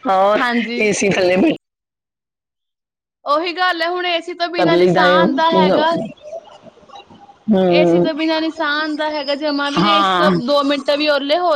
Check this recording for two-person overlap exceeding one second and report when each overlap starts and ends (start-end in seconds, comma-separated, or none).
4.6-5.8